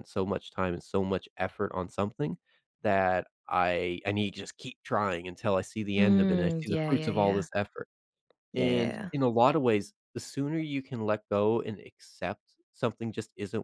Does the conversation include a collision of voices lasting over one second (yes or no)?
yes